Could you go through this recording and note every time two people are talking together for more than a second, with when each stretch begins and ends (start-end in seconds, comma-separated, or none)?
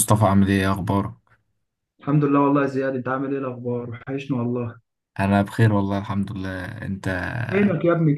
none